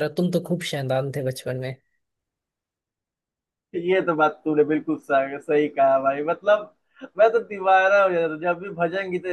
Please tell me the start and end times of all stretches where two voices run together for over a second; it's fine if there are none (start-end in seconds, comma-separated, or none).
none